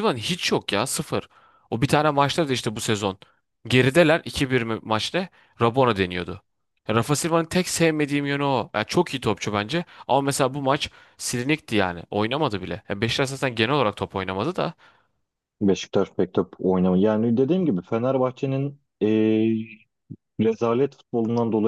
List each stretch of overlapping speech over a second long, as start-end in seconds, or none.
none